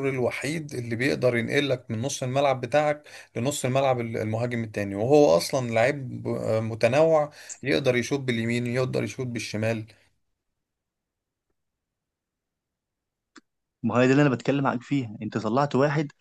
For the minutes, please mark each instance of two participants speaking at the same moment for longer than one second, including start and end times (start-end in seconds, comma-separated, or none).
none